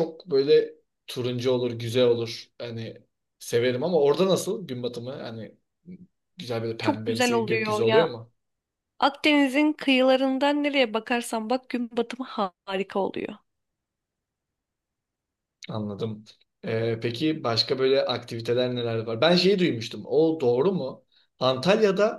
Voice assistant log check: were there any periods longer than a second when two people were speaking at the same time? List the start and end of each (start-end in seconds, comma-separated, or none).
6.8-8.1